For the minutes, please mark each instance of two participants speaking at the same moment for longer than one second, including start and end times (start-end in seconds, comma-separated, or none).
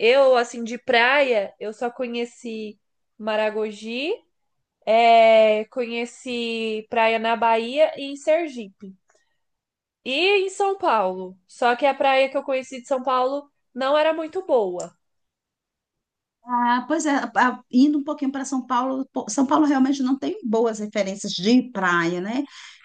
none